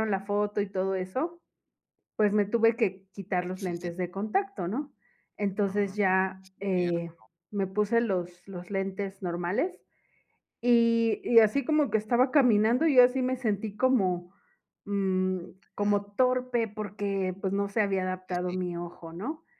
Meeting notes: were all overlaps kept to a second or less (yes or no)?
yes